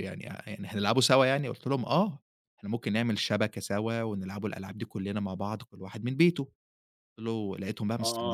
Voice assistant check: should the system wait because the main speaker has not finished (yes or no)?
no